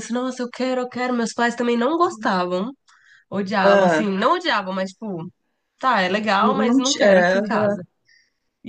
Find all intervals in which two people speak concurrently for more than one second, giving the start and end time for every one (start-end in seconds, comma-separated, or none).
6.4-7.8